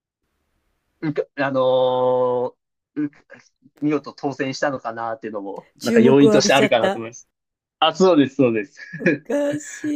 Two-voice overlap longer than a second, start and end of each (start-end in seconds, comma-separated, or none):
5.8-7.0